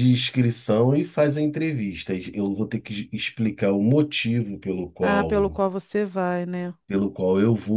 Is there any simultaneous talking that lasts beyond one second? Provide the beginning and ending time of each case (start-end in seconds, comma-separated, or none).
none